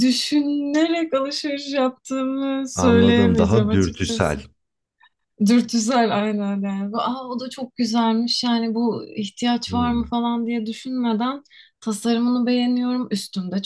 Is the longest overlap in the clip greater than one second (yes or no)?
yes